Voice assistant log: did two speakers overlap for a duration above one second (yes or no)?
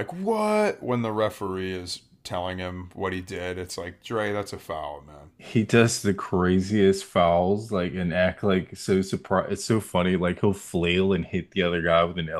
no